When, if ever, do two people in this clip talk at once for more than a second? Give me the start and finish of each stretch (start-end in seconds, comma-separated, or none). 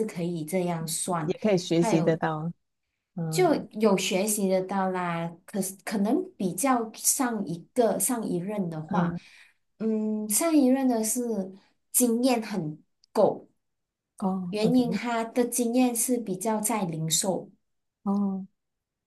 none